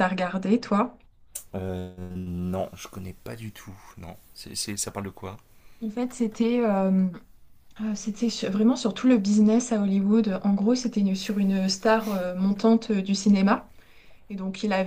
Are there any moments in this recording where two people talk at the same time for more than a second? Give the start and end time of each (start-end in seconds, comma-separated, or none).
none